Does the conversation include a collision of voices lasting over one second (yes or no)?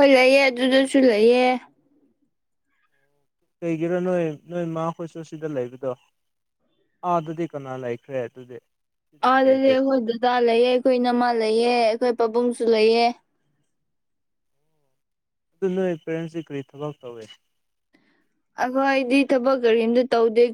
no